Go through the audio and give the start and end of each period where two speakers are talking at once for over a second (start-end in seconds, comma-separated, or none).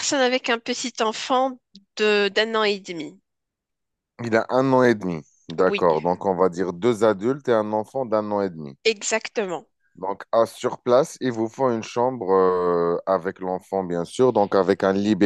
none